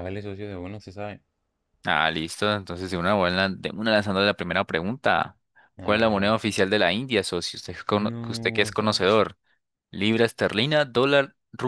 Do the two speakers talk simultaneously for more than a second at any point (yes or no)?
yes